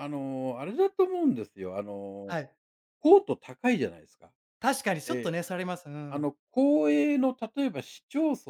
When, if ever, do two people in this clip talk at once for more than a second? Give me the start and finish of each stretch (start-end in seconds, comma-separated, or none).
none